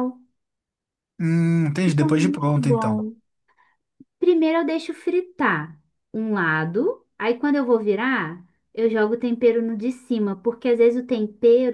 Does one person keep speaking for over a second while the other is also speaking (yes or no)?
yes